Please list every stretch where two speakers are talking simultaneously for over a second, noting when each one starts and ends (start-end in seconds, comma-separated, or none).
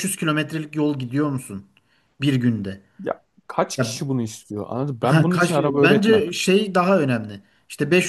5.0-6.2